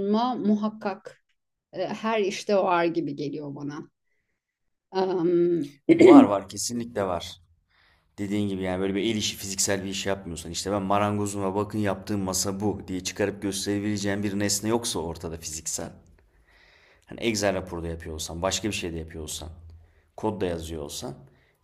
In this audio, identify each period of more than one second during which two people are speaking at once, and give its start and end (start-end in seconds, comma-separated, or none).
none